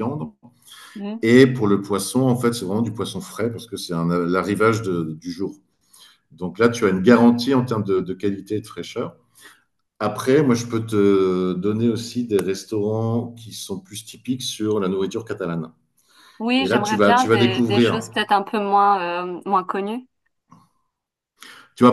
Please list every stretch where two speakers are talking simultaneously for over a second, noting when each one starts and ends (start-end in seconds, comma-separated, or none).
16.6-18.1